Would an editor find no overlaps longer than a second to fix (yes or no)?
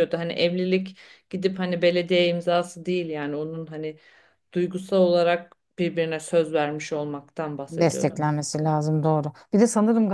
yes